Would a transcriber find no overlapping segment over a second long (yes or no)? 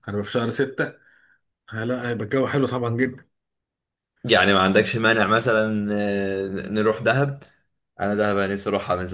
yes